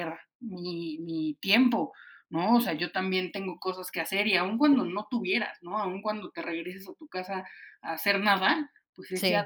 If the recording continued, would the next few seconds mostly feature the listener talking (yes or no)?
no